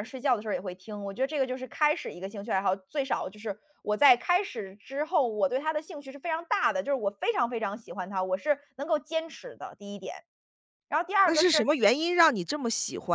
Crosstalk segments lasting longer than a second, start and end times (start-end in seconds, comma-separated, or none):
none